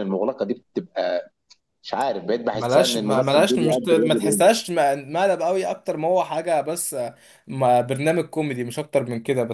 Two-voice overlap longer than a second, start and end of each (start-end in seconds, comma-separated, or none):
2.5-4.4